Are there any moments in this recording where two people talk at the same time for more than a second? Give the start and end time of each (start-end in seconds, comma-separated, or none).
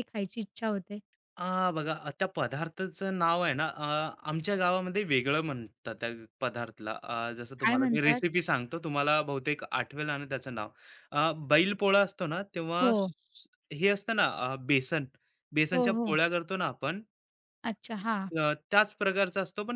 none